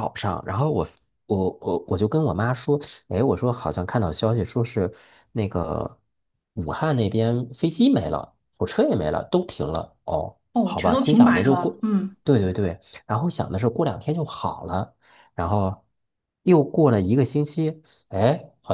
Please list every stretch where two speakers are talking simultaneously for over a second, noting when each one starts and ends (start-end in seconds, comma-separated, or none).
10.5-11.8